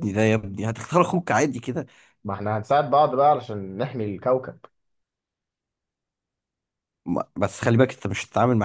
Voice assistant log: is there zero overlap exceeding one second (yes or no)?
yes